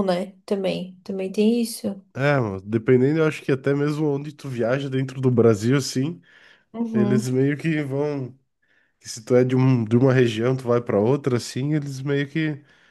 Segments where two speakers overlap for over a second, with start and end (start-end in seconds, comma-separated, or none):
none